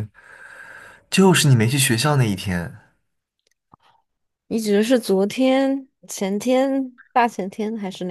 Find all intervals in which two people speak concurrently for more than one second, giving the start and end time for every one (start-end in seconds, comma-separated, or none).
none